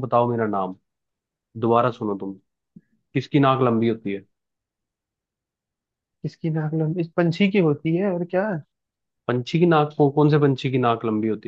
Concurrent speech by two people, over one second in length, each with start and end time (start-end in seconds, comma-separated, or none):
none